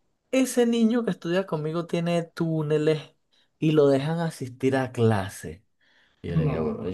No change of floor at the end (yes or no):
yes